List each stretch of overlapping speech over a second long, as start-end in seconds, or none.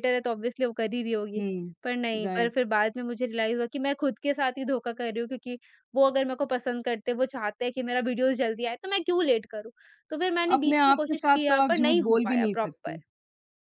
10.6-13.0